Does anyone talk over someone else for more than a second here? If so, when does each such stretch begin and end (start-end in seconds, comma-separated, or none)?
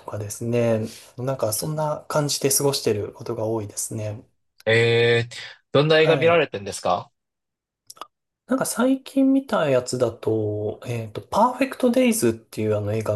none